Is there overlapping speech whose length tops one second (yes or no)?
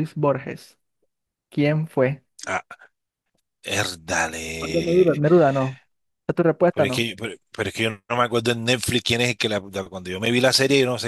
no